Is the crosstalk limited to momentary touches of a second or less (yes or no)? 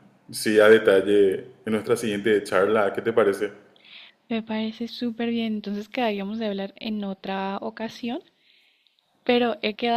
yes